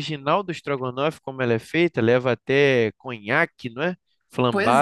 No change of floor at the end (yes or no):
no